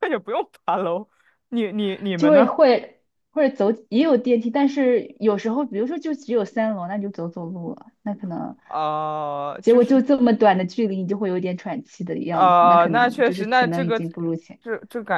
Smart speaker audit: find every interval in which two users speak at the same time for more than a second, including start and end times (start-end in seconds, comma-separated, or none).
12.3-14.0